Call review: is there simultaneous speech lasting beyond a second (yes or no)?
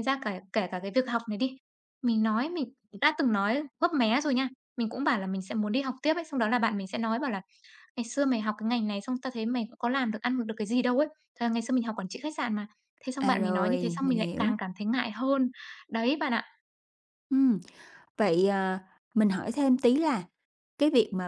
yes